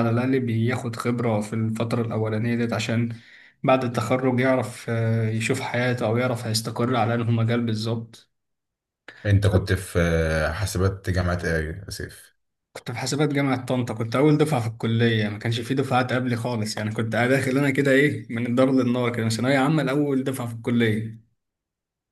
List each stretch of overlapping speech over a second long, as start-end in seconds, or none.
none